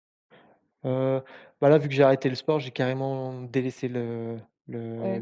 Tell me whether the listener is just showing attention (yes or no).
yes